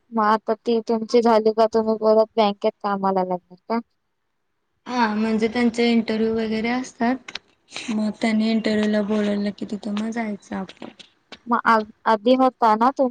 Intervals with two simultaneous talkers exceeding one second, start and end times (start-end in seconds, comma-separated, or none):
none